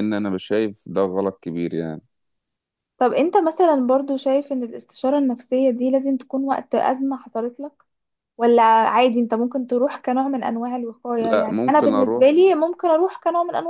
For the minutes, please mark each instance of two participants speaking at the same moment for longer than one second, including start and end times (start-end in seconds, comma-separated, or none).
11.2-12.5